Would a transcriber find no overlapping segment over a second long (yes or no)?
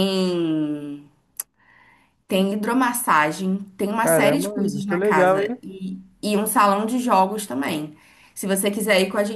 no